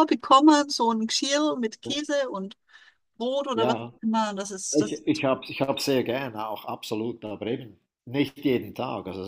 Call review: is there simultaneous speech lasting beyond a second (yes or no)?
no